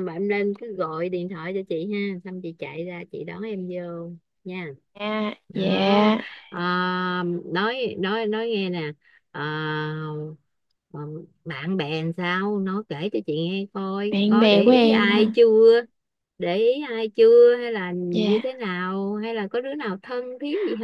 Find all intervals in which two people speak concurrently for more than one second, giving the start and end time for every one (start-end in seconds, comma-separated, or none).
14.1-15.4